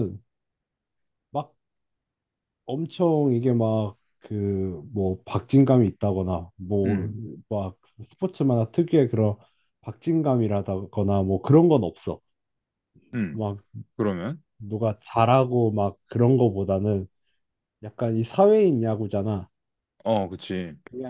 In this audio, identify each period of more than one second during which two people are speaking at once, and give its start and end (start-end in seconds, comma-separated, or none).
none